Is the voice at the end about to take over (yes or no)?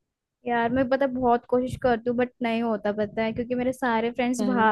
no